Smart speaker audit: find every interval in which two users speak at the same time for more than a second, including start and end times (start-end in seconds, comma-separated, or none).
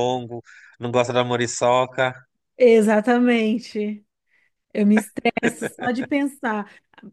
none